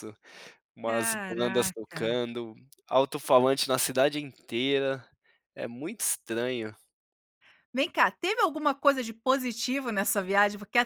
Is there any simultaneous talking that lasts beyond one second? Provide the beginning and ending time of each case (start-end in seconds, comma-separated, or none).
0.8-2.2